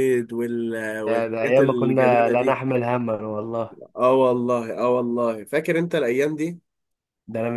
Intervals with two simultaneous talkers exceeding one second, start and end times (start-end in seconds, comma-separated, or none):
1.1-2.6